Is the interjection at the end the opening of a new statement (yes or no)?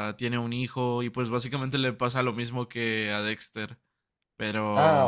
yes